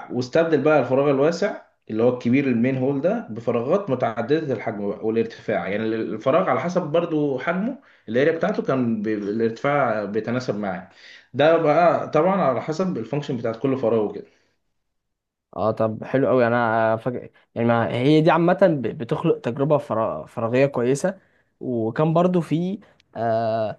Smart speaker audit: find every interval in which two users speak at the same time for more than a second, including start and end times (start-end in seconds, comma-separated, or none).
none